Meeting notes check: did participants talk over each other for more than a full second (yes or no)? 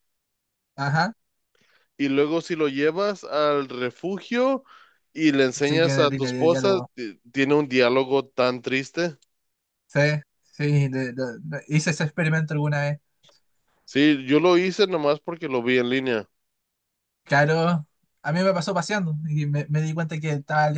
yes